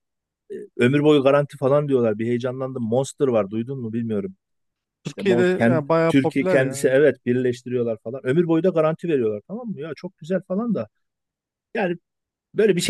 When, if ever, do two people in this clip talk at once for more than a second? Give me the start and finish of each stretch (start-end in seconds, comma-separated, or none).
5.0-6.9